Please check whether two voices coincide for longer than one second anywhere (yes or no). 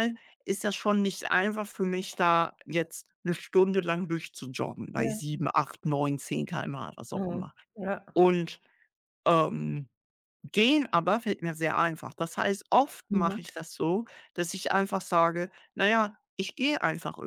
no